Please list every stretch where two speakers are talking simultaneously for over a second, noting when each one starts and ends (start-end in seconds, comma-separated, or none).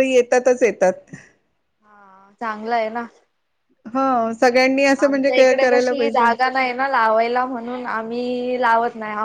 5.0-6.3